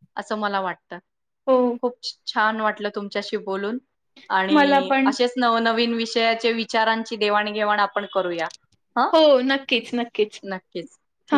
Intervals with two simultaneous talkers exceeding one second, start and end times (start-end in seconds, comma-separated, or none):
none